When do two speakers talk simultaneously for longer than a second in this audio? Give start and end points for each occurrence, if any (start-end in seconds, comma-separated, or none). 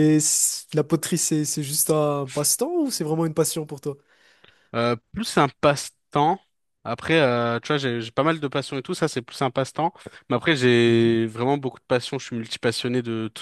none